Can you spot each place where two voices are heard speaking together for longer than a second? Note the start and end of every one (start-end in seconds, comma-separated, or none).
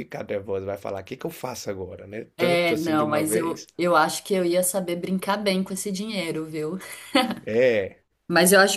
2.4-3.7